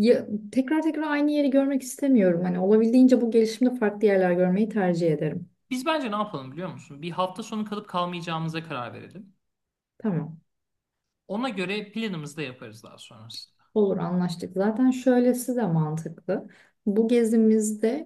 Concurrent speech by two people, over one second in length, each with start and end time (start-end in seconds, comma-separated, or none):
none